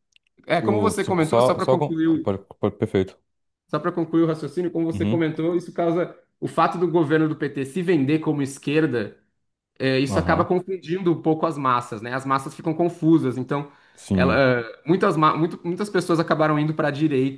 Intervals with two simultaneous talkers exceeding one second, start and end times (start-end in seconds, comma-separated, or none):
0.6-2.3